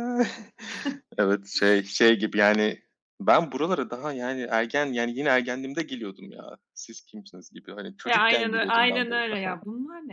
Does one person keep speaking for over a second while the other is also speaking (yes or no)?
yes